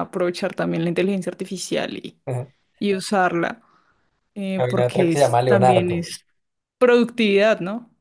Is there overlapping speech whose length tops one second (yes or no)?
yes